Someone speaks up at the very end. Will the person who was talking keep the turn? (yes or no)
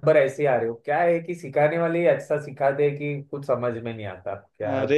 no